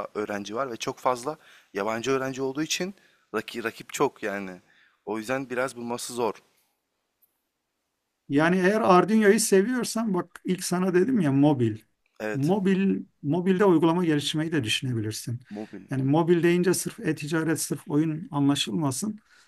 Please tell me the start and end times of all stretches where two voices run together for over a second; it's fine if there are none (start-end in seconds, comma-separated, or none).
none